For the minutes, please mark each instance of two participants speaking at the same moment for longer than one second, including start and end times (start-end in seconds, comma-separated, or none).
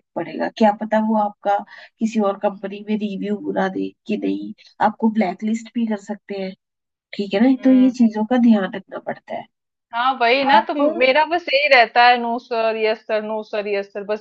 none